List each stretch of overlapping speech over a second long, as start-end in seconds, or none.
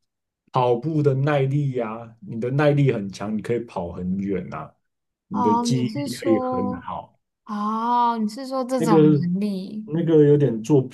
5.3-6.9